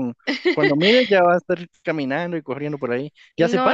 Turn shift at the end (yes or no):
yes